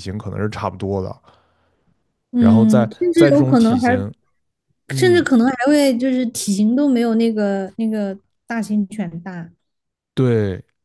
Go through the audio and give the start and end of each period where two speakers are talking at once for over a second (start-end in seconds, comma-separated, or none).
2.4-3.9